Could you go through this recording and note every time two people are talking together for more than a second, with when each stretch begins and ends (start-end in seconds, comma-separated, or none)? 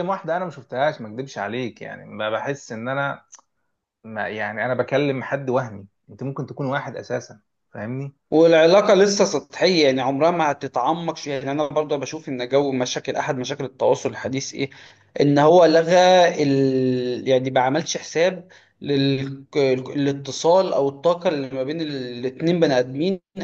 none